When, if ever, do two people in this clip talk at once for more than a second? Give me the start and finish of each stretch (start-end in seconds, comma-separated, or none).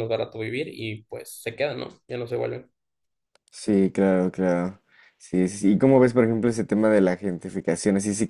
none